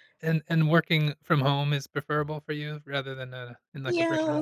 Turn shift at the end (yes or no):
yes